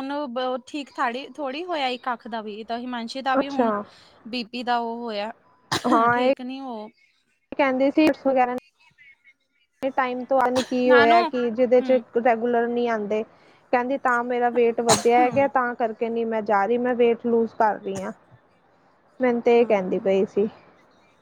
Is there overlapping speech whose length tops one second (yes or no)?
no